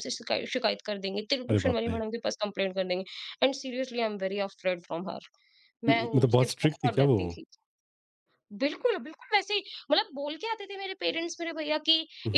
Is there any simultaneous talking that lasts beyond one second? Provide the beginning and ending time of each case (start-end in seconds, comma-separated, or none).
5.9-7.2